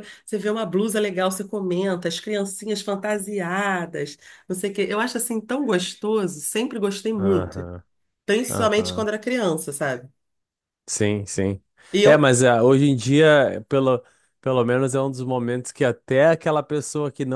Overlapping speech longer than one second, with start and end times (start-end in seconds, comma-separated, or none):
none